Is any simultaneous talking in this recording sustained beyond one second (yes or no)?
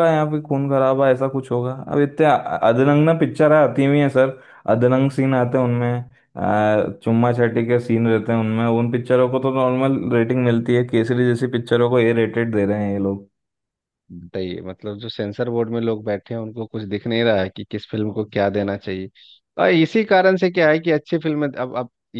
no